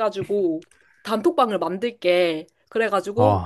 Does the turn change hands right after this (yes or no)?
no